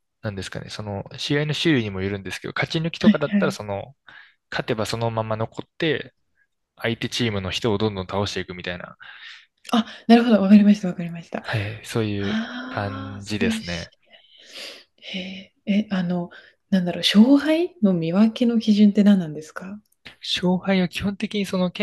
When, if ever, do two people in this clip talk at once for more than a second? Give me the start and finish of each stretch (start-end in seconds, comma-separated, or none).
12.2-13.9